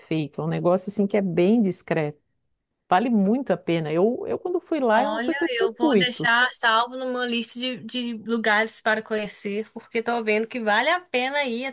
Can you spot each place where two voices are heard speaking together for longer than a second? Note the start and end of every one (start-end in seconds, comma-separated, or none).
4.9-6.3